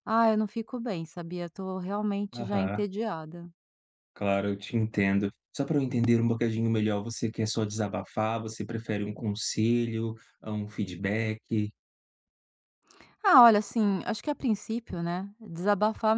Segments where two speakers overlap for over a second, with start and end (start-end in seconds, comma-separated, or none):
none